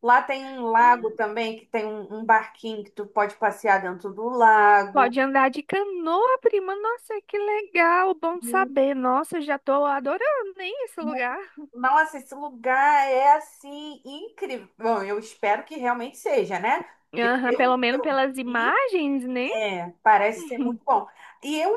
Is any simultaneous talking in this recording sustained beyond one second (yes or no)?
yes